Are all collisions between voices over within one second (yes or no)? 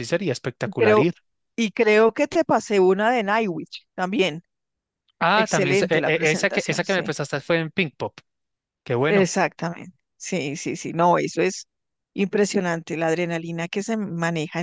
no